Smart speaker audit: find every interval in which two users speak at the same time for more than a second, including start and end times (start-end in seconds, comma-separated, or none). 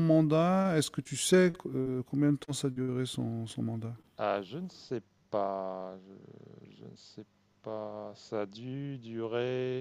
none